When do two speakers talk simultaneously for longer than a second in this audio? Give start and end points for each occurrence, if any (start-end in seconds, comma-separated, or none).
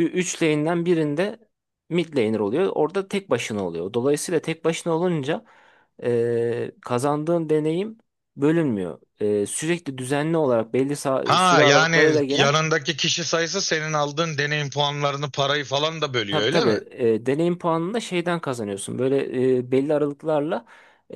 11.2-12.6